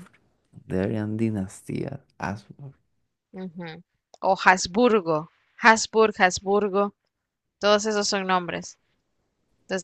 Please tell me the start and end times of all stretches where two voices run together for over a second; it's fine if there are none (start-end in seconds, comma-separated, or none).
none